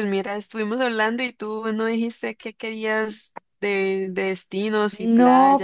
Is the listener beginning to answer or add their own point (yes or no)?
yes